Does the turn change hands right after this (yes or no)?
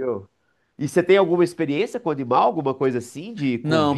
yes